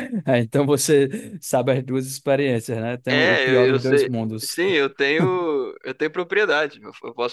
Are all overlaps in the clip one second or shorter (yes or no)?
no